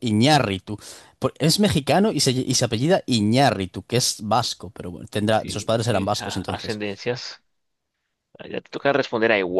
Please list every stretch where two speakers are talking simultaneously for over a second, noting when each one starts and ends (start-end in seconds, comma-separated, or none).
5.3-6.8